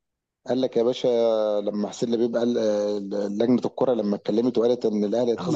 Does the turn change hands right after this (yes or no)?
yes